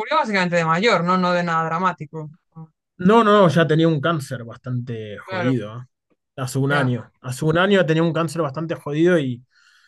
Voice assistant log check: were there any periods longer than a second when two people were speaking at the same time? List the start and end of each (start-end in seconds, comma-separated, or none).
none